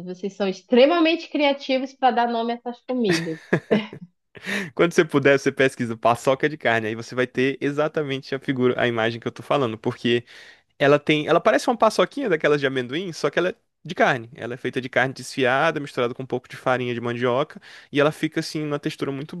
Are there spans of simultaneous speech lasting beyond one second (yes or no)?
no